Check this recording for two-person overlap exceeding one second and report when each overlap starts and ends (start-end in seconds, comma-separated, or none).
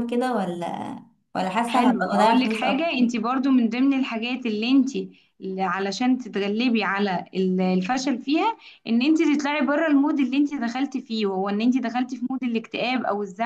1.7-3.0